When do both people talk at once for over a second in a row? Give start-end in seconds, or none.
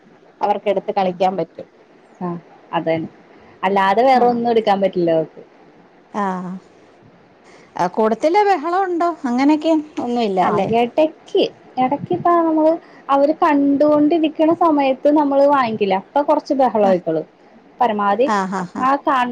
none